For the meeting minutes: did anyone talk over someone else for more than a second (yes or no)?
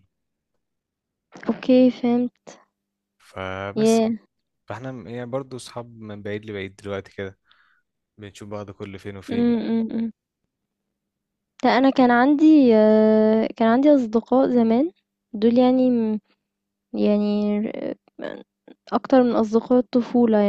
no